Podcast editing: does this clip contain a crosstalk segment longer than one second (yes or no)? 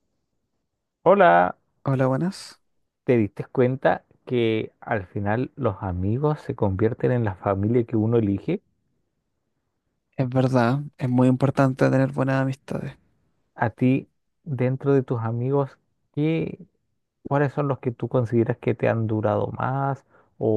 no